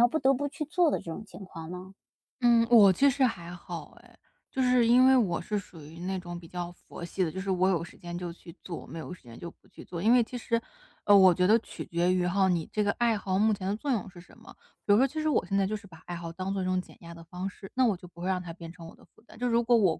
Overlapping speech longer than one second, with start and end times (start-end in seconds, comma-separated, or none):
none